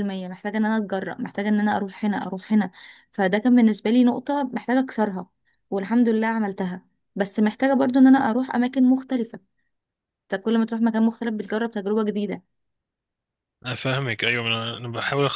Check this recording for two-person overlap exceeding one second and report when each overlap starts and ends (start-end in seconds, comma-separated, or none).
none